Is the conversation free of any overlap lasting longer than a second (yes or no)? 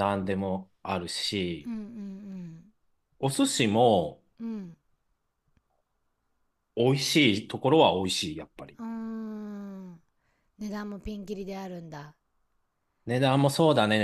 yes